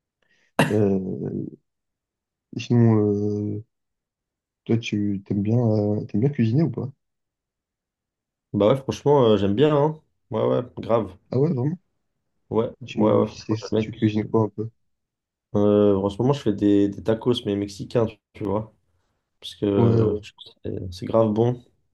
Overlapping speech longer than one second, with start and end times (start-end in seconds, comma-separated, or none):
12.8-14.3